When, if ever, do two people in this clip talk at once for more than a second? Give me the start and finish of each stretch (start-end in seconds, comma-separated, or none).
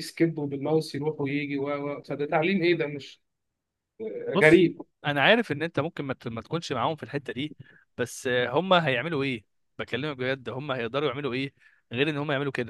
none